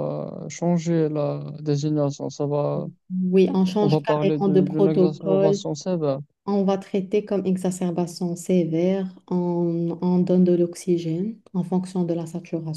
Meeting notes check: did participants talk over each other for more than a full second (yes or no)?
yes